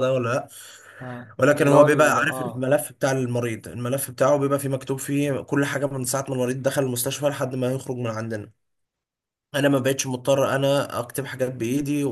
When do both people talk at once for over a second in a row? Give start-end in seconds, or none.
1.4-2.7